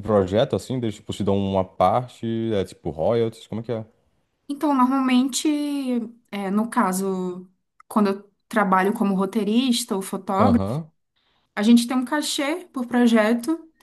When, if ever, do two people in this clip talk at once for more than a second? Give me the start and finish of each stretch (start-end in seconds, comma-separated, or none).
none